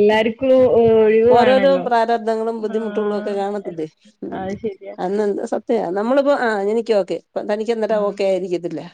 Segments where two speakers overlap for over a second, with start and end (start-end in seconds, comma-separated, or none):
none